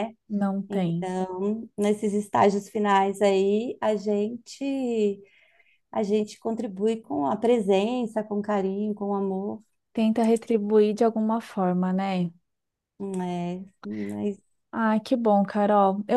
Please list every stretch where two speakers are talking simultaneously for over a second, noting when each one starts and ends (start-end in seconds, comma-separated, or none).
none